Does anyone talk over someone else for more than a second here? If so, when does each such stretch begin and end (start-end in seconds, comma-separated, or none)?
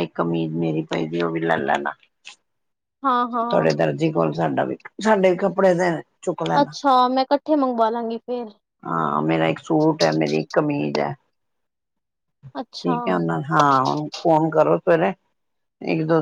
none